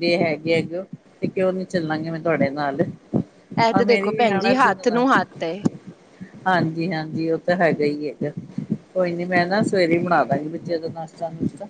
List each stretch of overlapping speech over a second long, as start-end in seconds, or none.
3.8-5.2